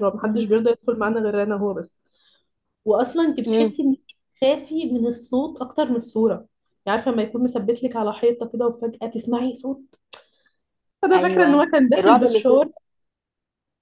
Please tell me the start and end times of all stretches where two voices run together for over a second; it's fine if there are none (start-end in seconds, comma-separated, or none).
11.1-12.5